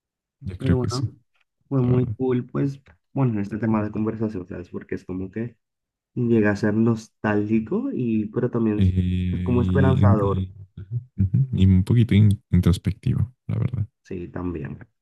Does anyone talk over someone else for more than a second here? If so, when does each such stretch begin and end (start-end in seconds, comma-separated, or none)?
8.7-10.5